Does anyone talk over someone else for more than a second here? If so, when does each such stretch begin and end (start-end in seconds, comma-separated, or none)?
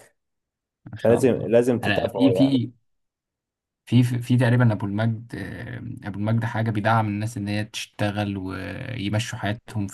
1.0-2.6